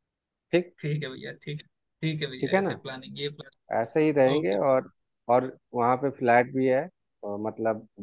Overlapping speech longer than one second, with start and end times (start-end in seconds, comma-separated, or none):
none